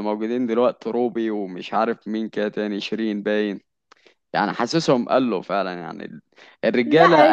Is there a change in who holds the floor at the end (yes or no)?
yes